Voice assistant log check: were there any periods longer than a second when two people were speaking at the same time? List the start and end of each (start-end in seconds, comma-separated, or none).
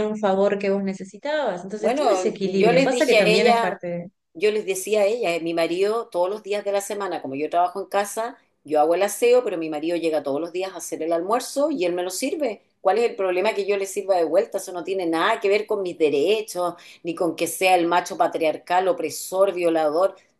1.8-3.8